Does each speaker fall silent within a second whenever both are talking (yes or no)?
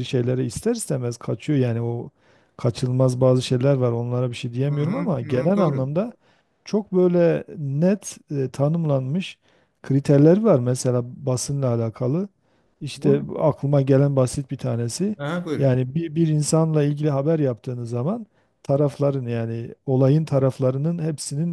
no